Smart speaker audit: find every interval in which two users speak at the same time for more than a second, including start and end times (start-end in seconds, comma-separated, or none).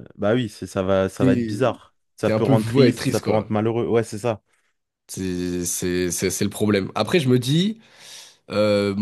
2.2-3.5